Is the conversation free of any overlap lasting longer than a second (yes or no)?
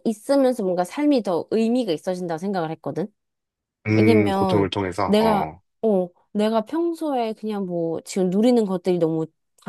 no